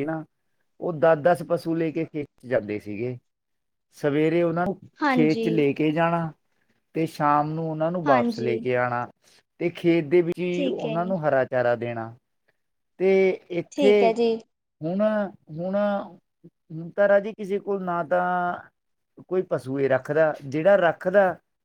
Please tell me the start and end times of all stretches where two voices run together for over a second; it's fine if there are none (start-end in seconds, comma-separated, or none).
none